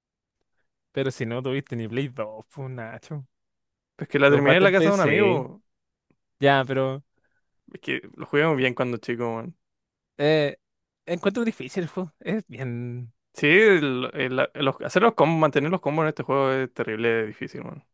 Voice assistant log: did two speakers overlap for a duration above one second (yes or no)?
yes